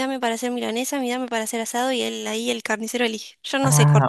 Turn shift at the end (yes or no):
yes